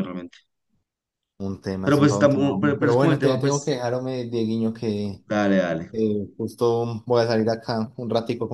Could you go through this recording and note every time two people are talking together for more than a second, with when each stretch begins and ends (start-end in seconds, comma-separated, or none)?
1.8-3.8